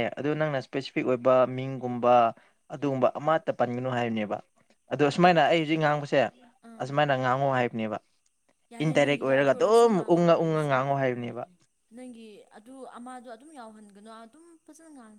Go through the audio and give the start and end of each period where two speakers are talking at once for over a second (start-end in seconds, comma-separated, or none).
8.8-10.7